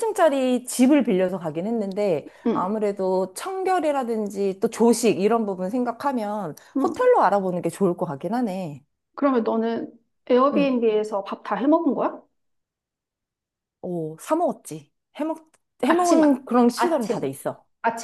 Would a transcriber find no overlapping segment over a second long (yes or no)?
no